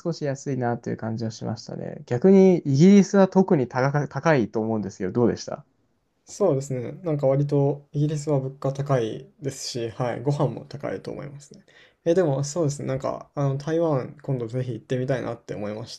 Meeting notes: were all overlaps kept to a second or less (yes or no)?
yes